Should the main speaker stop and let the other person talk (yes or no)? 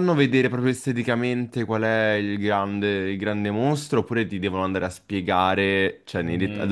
no